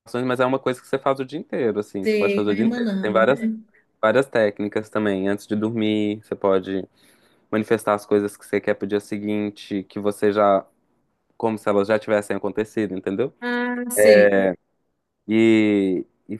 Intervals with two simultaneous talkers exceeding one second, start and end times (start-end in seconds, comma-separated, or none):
2.0-3.3